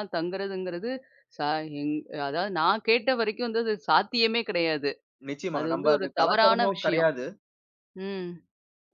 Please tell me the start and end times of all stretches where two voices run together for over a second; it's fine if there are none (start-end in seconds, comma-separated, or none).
5.6-7.1